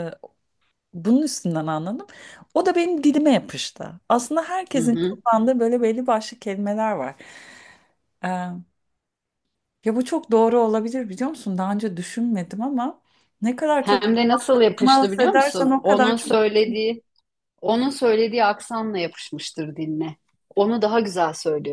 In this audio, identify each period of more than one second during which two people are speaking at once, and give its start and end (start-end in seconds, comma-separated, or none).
14.8-16.3